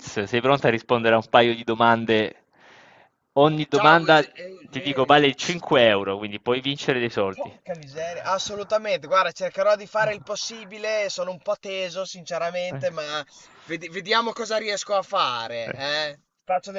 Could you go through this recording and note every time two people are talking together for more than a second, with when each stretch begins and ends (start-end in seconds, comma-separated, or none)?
3.7-5.6